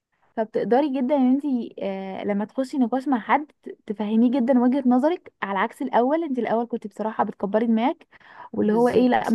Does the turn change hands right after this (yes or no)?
no